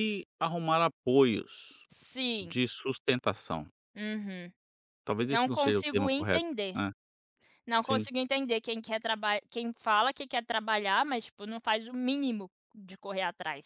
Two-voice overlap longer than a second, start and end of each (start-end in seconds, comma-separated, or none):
5.3-6.8